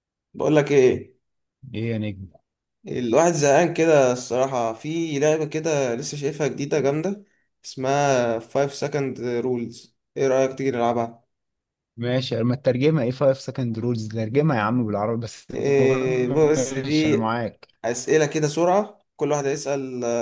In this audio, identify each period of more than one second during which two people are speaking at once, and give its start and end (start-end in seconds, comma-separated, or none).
15.5-17.2